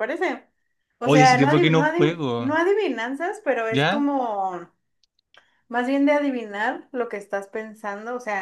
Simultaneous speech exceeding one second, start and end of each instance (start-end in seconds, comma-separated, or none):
1.0-2.6